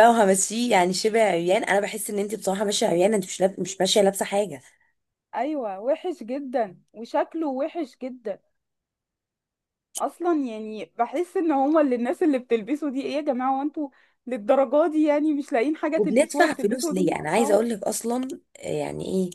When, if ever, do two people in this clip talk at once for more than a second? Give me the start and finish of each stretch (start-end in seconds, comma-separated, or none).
16.0-17.6